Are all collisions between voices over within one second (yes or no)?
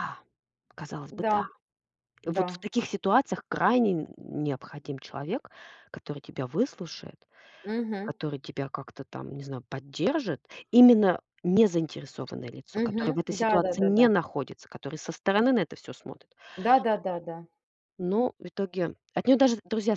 no